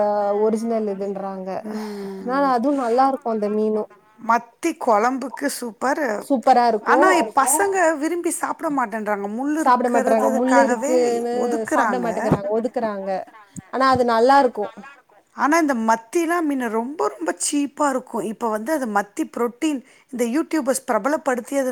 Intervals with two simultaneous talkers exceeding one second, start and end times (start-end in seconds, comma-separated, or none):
9.6-10.9